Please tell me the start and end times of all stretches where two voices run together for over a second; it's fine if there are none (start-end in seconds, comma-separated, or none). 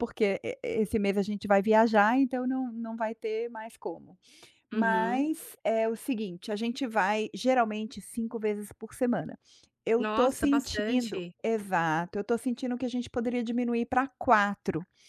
10.0-11.3